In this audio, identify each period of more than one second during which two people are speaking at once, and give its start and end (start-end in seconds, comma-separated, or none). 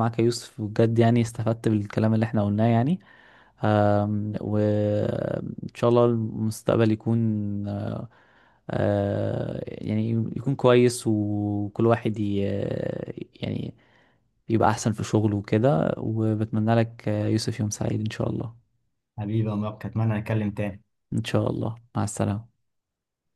none